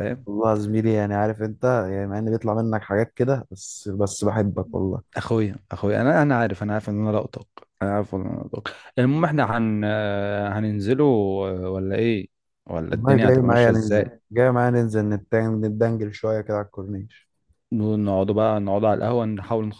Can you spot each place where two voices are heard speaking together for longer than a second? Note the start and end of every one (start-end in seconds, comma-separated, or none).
12.9-14.2